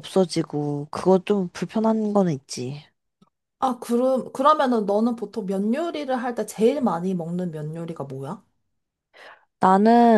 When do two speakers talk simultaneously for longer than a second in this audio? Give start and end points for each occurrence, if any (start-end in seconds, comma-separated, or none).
none